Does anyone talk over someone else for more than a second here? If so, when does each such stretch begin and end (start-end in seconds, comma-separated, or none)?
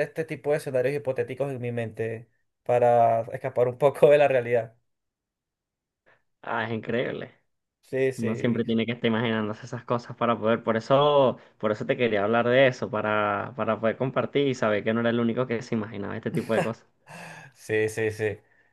none